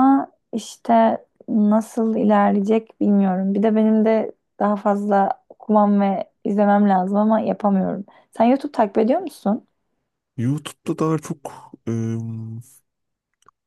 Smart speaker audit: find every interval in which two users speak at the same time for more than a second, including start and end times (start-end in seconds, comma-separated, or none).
none